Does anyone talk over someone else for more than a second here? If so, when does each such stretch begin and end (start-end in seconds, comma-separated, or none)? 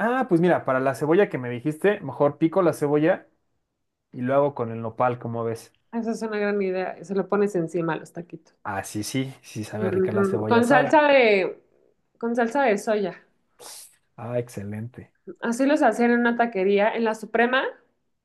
9.8-11.0